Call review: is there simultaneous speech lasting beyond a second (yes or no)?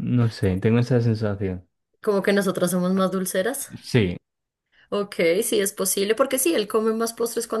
no